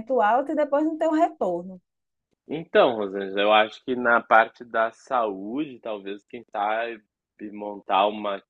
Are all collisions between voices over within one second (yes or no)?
yes